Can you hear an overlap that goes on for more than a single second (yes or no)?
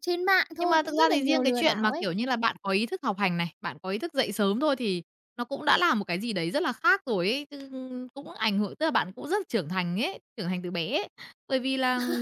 yes